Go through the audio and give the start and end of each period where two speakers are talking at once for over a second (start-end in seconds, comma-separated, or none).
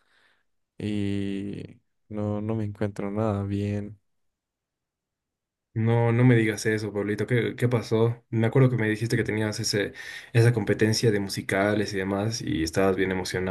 none